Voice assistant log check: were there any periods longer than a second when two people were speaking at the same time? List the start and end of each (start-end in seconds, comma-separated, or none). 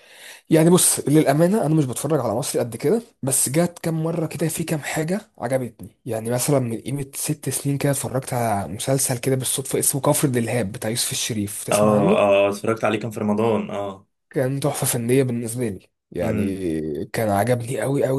none